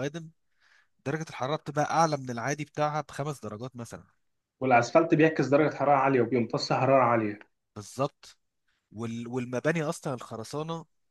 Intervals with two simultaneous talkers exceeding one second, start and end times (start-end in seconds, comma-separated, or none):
none